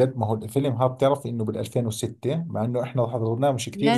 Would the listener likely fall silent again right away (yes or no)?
no